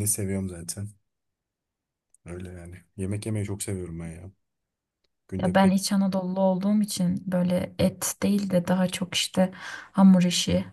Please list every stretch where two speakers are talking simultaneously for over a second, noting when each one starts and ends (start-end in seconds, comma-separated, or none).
none